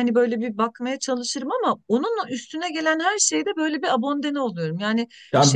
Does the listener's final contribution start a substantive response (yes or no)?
yes